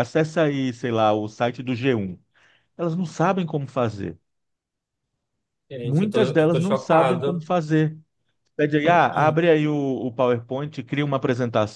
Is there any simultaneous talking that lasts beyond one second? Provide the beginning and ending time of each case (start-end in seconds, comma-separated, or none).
5.8-7.5